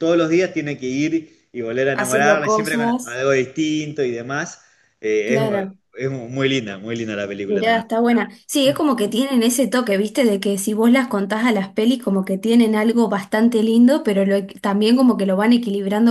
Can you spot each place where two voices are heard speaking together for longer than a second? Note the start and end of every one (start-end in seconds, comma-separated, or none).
1.9-3.2